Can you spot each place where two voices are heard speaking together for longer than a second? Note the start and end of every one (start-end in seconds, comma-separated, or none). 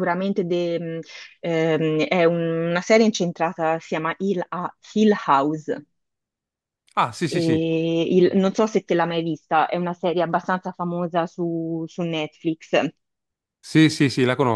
none